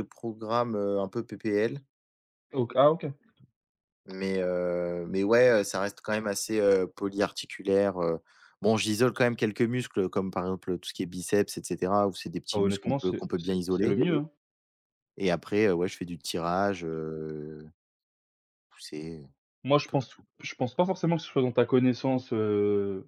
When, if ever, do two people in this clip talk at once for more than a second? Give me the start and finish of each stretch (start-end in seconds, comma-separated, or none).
12.5-14.0